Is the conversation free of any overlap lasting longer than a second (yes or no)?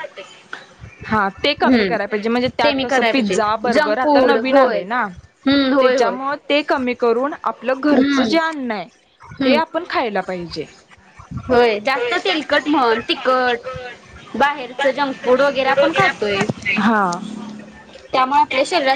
no